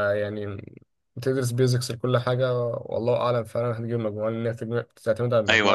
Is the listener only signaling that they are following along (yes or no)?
no